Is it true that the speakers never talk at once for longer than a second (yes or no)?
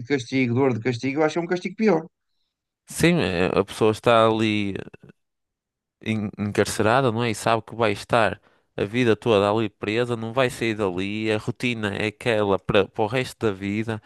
yes